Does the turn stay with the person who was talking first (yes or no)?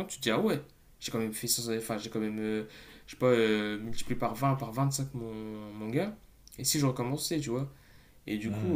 yes